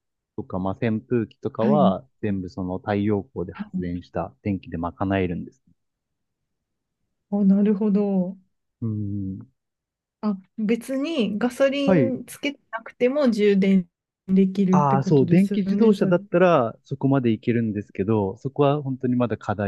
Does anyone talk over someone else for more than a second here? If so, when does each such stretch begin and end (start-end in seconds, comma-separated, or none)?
14.7-16.1